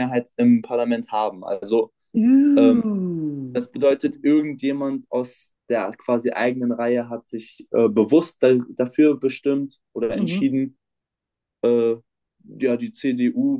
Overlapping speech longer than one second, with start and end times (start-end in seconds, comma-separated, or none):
none